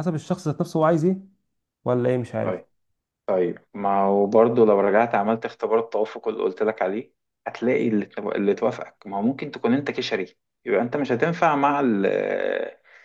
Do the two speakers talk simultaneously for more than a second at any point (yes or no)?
no